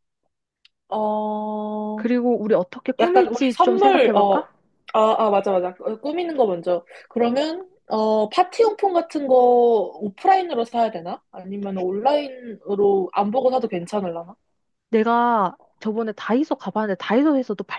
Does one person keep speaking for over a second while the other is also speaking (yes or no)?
yes